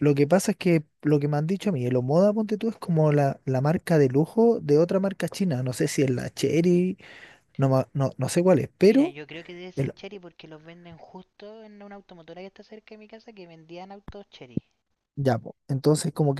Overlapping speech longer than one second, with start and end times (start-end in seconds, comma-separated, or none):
none